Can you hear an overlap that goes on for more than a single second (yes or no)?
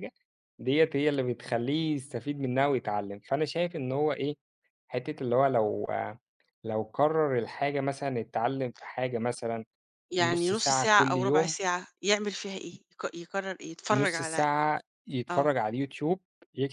yes